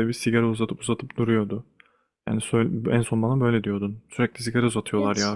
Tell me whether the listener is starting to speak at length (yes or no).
no